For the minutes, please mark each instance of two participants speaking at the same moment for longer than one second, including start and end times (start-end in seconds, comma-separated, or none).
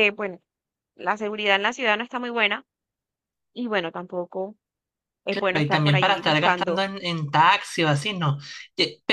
5.3-6.9